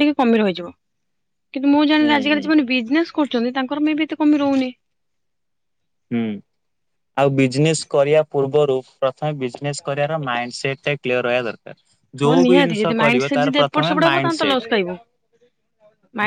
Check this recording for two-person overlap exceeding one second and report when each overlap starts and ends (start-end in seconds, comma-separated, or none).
12.2-14.7